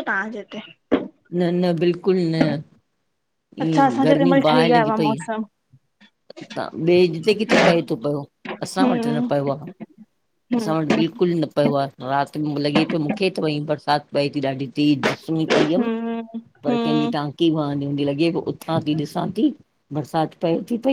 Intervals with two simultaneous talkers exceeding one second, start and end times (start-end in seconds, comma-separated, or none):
3.7-5.2